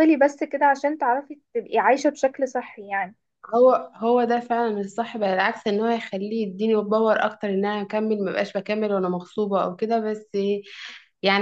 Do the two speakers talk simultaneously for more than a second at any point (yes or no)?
no